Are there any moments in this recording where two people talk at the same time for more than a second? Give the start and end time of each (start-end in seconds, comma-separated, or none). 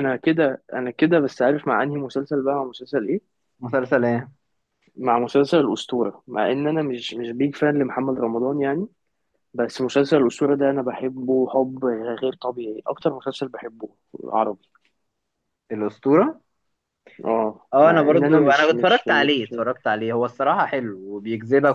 17.7-19.5